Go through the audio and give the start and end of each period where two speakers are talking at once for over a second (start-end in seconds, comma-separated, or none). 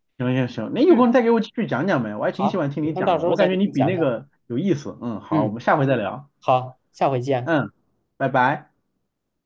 2.3-4.1